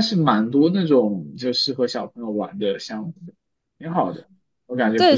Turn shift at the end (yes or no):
yes